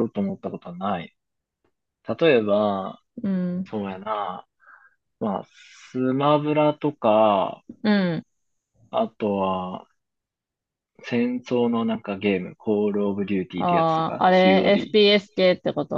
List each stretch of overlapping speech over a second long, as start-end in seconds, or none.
13.6-15.0